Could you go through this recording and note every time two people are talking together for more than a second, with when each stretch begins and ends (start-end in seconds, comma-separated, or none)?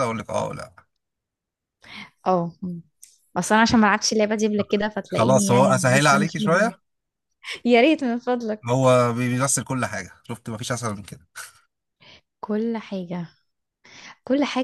5.1-6.7